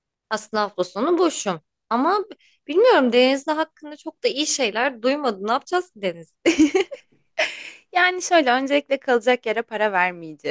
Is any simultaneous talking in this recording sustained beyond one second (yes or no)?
no